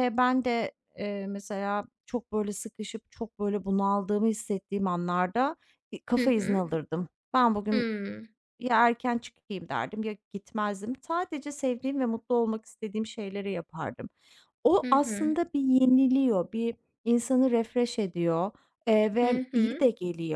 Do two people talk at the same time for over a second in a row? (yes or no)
no